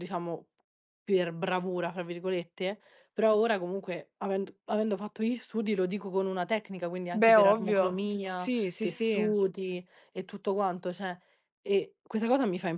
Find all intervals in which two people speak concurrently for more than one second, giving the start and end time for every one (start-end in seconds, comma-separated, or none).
7.1-9.3